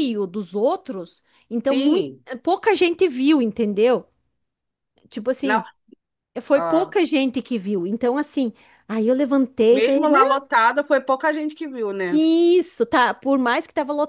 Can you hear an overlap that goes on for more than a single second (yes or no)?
no